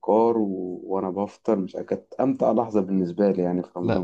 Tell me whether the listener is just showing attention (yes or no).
no